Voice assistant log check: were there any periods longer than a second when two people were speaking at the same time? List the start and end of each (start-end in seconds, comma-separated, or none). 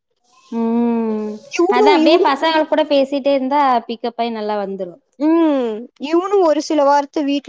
none